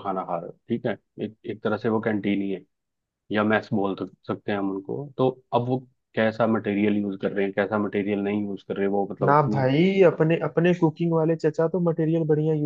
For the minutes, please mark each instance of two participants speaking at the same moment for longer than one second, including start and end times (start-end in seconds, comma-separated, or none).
none